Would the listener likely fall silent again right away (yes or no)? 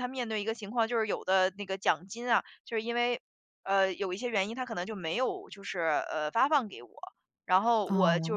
yes